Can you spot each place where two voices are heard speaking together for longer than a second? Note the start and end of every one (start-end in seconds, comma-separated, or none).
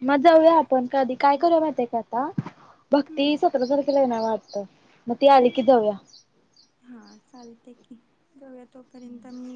none